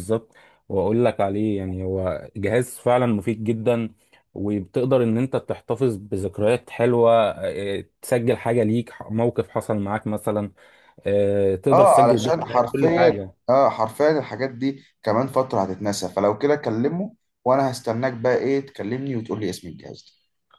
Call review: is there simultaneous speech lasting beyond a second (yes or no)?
yes